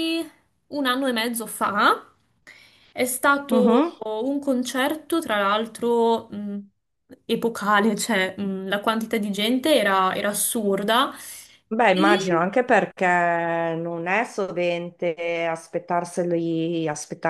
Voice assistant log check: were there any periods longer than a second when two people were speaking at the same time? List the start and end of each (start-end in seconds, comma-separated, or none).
none